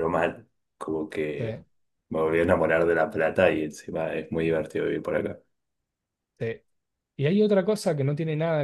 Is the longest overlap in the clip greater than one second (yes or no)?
no